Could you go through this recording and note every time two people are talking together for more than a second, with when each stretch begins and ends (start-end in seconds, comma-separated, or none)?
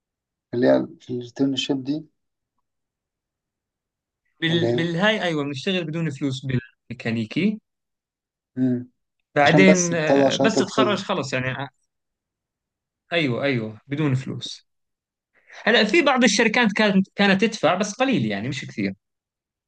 9.4-11.0